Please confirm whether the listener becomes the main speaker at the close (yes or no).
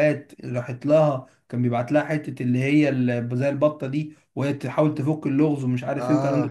no